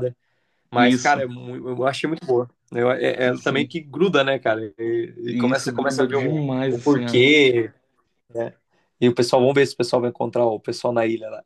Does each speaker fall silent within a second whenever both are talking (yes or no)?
no